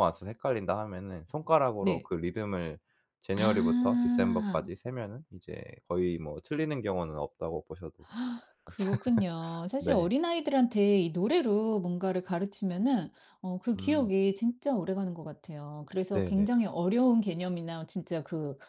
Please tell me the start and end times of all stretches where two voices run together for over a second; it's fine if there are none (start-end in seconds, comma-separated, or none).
3.4-4.7